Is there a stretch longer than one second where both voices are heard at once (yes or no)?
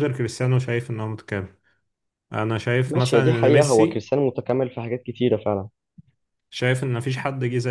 yes